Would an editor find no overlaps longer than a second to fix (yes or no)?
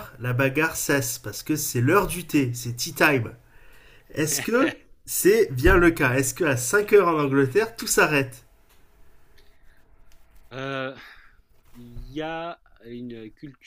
yes